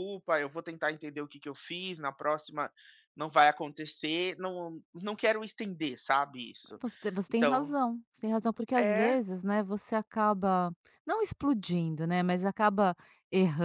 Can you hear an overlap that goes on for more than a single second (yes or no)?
no